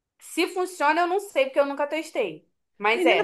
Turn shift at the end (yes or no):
yes